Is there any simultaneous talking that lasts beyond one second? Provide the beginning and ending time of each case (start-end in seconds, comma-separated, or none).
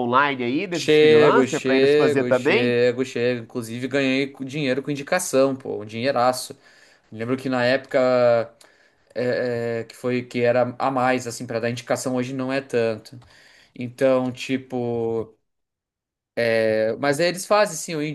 0.7-2.8